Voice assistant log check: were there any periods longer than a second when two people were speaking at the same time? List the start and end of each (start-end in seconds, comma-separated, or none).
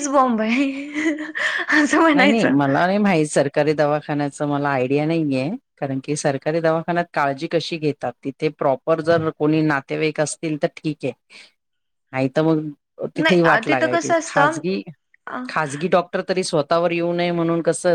13.2-14.6